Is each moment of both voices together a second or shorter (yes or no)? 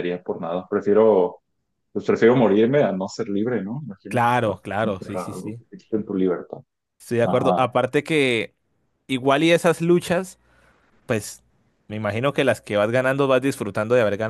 no